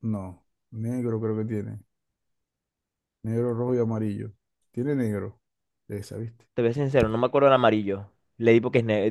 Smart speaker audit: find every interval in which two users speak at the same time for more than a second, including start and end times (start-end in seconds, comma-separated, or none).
none